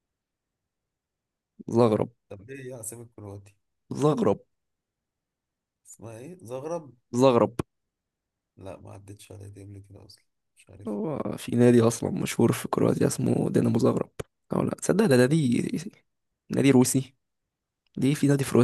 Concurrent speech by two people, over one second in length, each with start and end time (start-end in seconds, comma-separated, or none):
none